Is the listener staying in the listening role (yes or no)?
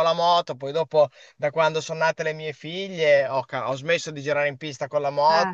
yes